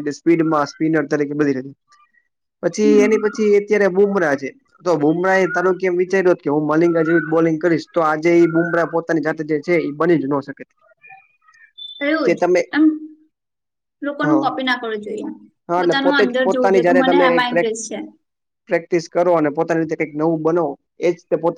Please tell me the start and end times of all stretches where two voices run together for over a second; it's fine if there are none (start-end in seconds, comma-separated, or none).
15.8-17.7